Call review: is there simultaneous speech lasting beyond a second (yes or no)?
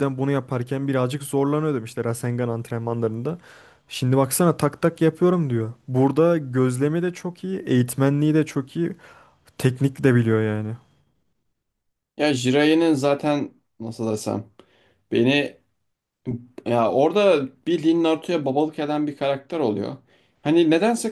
no